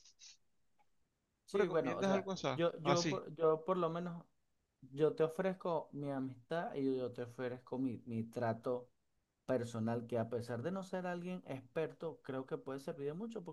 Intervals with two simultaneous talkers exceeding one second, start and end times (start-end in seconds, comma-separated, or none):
1.5-3.2